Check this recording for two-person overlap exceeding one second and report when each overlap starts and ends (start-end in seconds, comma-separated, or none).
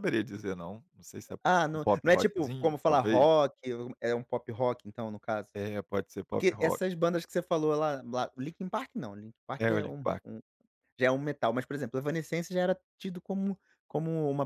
1.4-3.3